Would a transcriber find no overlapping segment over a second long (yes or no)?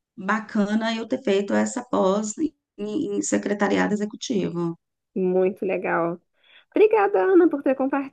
yes